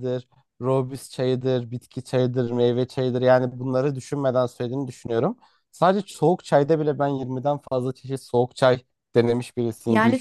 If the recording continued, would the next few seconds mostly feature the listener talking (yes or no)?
yes